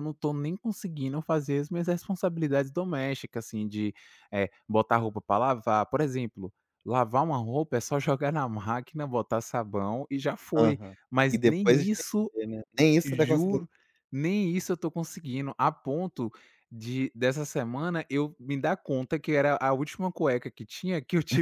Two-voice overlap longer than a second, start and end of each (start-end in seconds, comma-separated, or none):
10.6-12.3